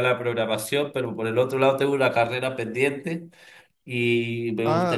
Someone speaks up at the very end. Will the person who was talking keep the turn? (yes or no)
no